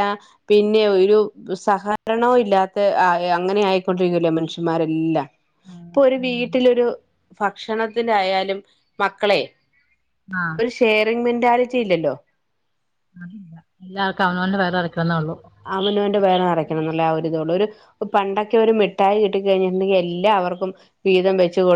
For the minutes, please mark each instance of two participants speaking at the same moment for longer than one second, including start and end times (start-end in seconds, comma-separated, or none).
none